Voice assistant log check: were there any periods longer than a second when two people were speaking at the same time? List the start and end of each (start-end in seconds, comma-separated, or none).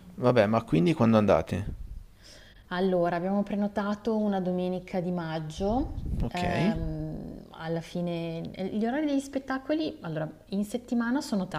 none